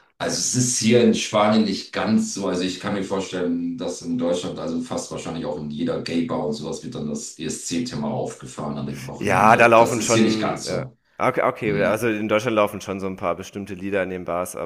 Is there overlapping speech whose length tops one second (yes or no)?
yes